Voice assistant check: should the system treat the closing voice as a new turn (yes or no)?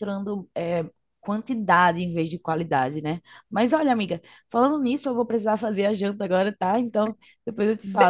yes